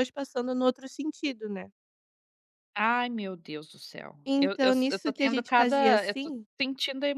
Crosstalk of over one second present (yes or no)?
yes